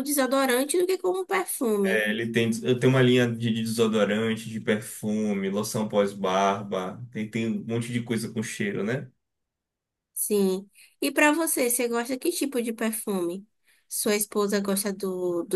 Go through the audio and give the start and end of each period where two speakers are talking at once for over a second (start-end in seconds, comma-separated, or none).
none